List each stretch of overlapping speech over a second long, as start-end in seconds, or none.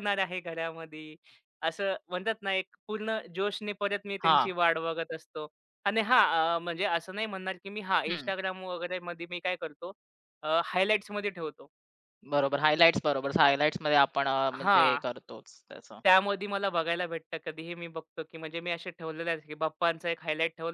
none